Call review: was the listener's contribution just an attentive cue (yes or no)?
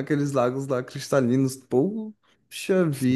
no